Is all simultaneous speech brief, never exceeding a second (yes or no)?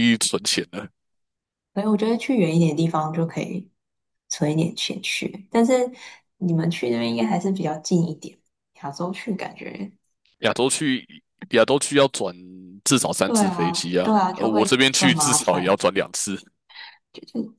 no